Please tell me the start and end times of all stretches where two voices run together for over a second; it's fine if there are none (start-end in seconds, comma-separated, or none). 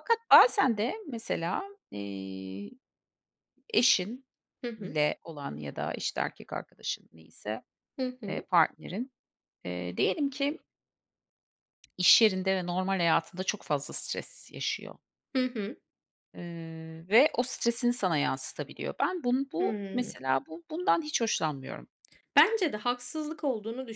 none